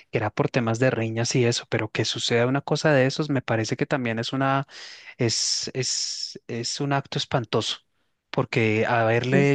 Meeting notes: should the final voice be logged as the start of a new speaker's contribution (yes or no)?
no